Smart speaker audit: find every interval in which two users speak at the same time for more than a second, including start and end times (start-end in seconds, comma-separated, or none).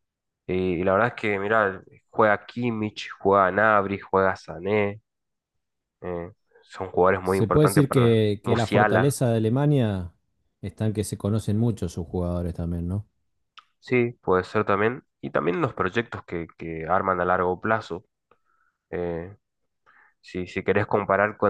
7.2-9.2